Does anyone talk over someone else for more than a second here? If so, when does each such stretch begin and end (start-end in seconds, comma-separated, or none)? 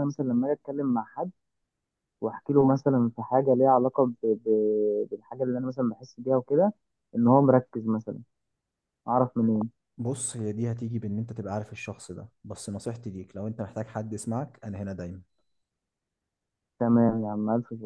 none